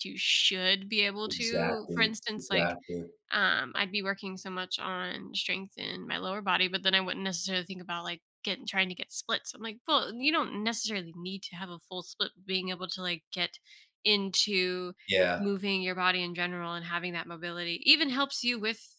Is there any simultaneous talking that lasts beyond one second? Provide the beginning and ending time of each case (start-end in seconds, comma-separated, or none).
1.2-2.8